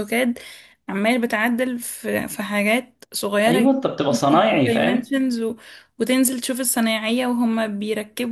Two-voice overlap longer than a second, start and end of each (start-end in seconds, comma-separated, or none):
3.5-5.1